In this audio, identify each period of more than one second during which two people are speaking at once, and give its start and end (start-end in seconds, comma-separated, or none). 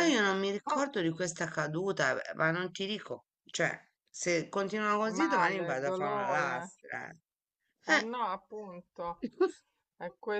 5.2-6.7